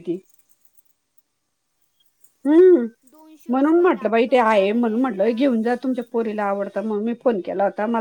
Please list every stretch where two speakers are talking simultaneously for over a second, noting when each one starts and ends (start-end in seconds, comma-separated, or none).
3.5-5.3